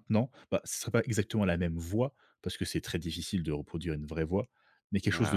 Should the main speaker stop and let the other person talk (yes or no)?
no